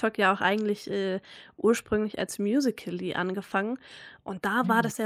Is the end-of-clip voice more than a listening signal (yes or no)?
no